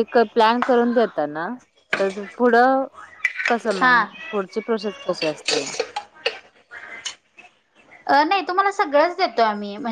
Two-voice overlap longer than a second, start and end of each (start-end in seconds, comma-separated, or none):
none